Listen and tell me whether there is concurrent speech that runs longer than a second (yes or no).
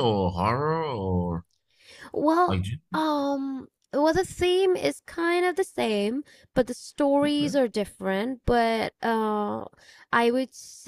no